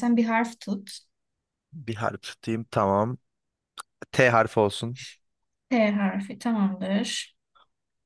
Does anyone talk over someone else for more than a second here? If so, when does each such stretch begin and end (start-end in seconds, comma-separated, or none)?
none